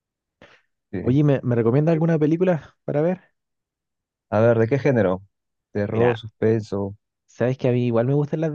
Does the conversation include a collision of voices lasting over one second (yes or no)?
no